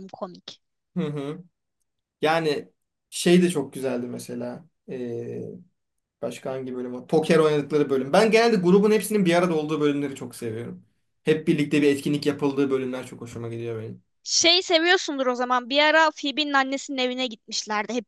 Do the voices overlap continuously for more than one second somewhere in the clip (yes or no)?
no